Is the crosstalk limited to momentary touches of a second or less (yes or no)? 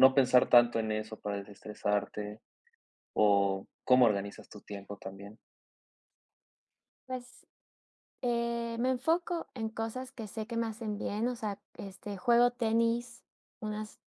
yes